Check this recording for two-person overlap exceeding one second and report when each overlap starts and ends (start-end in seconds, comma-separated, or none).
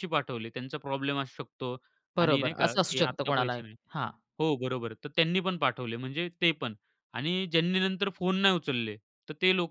2.2-3.6